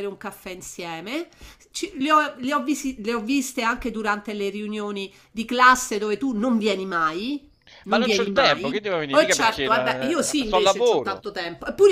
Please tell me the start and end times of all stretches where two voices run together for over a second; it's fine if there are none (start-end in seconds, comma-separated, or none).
7.9-11.2